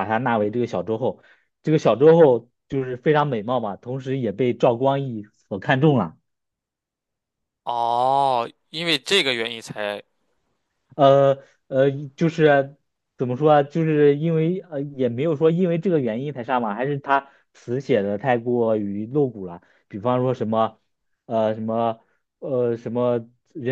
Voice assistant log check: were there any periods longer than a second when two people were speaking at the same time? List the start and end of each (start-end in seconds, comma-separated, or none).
none